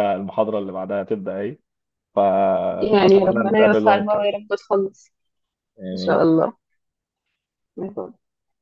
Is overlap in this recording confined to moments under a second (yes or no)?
no